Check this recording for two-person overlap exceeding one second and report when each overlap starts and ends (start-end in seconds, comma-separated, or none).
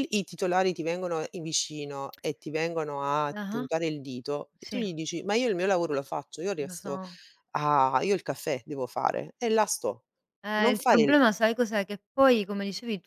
none